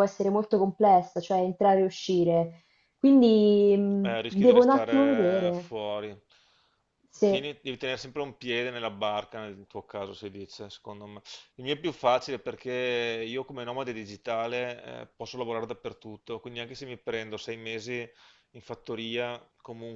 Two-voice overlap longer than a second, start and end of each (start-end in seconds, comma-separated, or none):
4.0-5.7